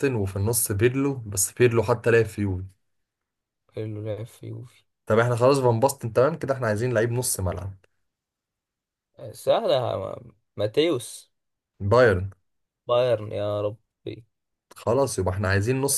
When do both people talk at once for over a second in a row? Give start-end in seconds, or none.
none